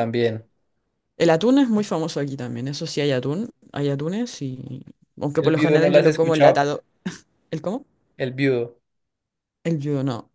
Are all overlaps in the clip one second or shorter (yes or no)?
no